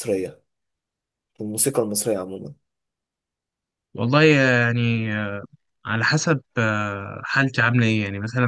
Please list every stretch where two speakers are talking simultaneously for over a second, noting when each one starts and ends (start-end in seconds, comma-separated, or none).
none